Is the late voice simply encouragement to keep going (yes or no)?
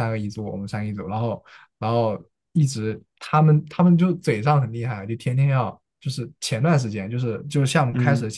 yes